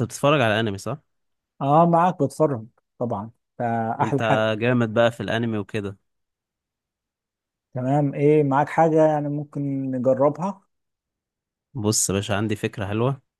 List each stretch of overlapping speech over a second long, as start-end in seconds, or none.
none